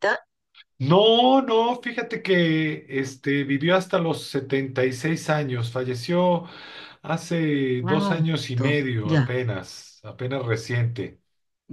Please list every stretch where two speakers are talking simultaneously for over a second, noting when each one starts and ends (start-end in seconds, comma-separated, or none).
7.8-9.3